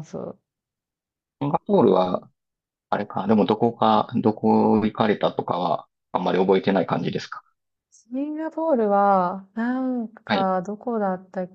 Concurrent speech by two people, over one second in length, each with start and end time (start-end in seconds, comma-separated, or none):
none